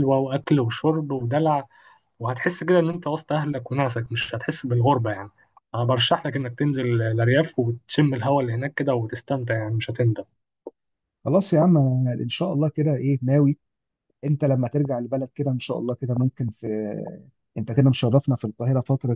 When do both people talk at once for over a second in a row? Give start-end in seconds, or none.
none